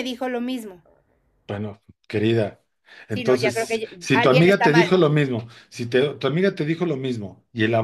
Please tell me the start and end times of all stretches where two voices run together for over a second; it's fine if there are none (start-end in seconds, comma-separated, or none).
3.1-4.9